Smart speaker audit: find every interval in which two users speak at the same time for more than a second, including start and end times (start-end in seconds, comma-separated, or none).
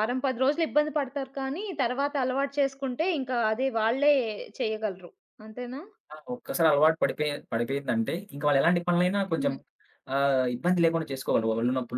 none